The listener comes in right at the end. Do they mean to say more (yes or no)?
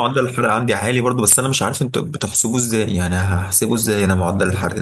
yes